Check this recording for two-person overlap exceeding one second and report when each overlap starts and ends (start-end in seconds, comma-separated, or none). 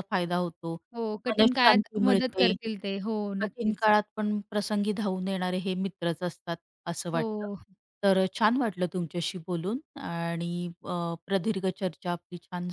1.3-2.5